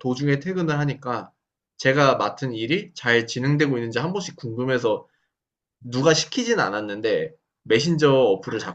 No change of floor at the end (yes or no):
yes